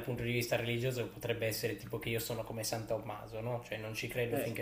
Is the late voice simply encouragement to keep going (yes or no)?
yes